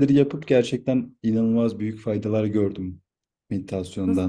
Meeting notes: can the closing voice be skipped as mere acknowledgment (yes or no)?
no